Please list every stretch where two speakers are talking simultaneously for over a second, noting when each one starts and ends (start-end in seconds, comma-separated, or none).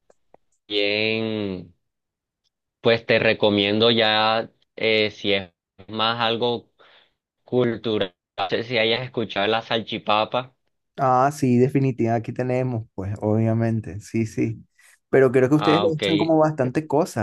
none